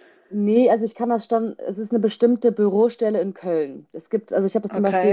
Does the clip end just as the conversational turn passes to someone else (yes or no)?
no